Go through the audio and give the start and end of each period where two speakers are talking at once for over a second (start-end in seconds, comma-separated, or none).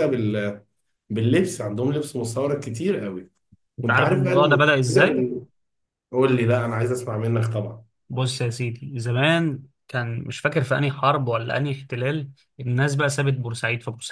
3.8-5.2